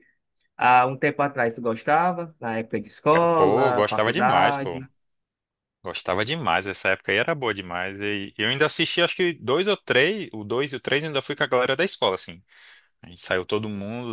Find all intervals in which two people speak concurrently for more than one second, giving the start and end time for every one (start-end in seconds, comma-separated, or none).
3.1-4.8